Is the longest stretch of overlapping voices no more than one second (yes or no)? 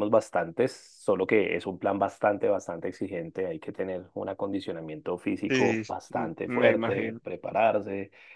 no